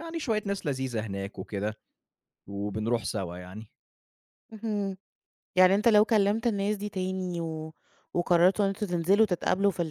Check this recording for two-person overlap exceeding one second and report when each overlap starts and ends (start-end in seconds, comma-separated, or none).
none